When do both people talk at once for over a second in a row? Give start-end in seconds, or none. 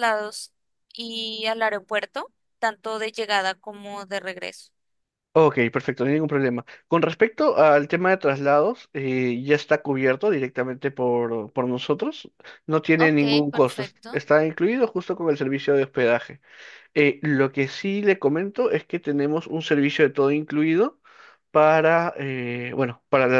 13.0-14.2